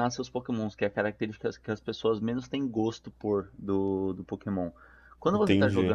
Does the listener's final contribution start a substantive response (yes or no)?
no